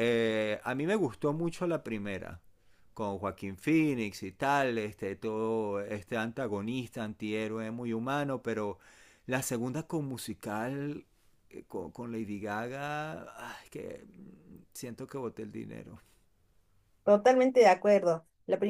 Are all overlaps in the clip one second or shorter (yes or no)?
yes